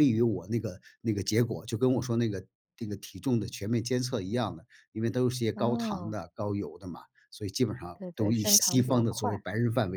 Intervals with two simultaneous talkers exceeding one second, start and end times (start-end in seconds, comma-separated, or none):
7.9-9.4